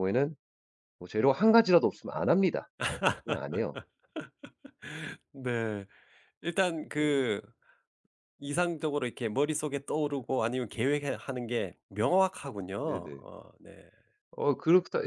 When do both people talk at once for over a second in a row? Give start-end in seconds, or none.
none